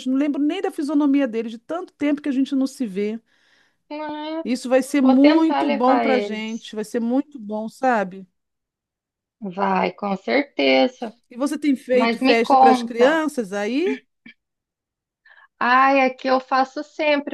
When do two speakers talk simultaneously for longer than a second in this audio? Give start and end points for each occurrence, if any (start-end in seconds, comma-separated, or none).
5.0-6.7, 11.9-13.2